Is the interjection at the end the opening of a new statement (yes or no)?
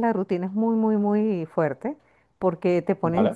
no